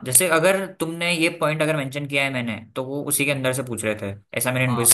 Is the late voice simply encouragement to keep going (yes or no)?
no